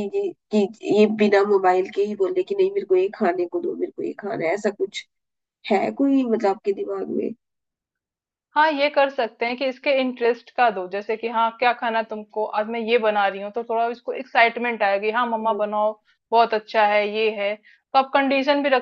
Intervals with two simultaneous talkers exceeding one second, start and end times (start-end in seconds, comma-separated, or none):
none